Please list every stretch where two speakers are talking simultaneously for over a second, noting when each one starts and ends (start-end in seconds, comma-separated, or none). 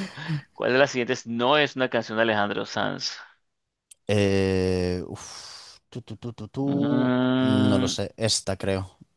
6.7-8.0